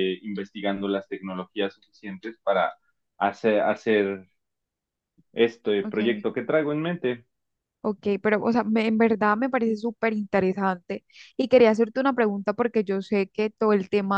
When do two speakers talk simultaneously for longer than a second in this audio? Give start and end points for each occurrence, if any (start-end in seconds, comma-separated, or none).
none